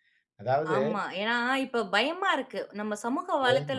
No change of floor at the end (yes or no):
yes